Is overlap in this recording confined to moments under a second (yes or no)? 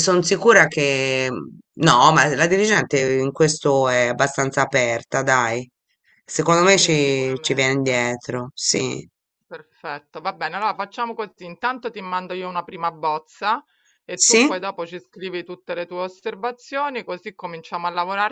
no